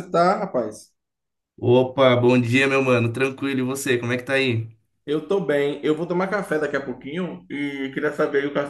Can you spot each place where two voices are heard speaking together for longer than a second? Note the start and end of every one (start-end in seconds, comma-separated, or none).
none